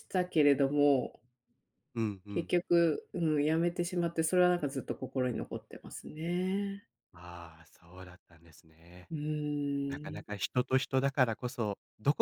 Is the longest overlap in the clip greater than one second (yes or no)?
no